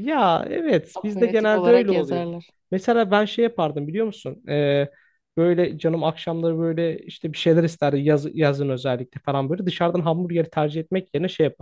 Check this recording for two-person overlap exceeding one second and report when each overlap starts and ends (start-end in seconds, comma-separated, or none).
0.9-2.3